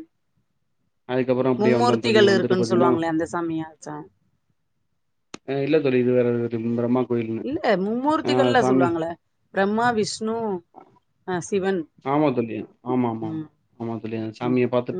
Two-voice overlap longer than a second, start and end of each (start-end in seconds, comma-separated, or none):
1.6-2.9